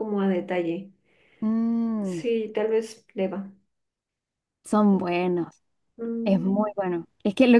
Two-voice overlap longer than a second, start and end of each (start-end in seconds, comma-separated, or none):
none